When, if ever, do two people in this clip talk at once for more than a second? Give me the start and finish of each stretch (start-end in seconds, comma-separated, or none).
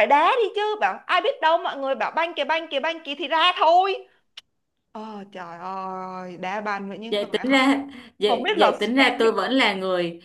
8.3-9.5